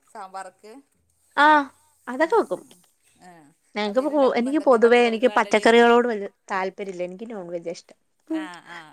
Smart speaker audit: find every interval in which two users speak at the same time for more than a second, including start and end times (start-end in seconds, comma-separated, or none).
3.9-5.7